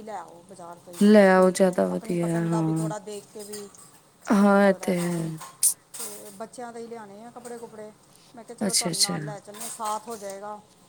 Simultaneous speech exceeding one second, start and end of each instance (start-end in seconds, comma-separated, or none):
1.4-2.9